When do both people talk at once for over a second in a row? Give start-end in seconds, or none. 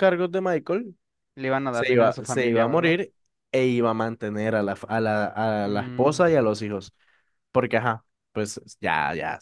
1.7-3.0